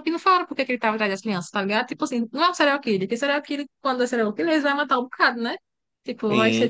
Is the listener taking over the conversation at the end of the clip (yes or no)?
yes